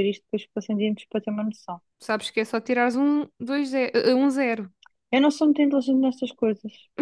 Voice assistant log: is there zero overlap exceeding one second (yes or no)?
yes